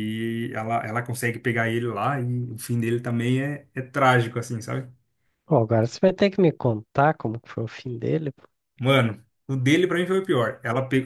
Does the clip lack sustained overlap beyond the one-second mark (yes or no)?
yes